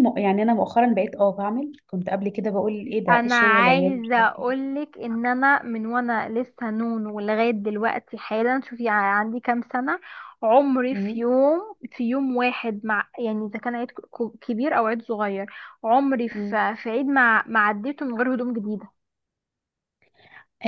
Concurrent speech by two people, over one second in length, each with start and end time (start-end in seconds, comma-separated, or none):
3.1-4.5